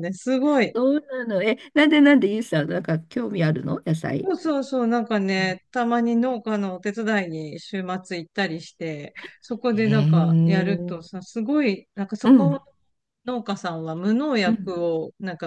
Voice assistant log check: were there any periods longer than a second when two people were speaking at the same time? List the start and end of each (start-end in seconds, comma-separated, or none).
9.7-11.0